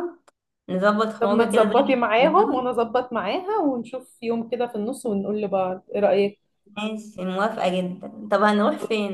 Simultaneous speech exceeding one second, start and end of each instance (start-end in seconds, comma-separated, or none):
1.2-2.8